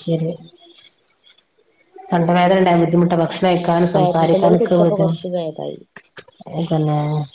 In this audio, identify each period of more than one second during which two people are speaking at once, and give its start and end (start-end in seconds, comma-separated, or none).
3.5-5.1